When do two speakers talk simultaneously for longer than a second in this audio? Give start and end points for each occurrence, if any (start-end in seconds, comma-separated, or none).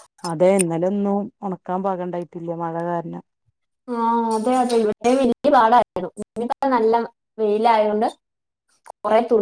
none